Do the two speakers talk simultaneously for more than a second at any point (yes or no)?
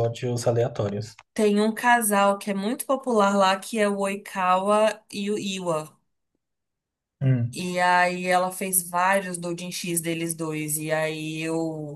no